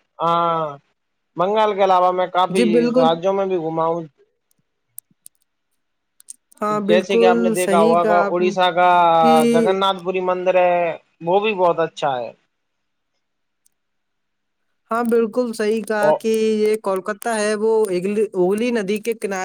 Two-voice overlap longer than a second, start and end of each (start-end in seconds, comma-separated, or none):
6.9-8.5